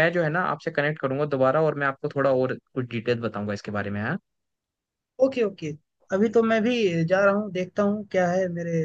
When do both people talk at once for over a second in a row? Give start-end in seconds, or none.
none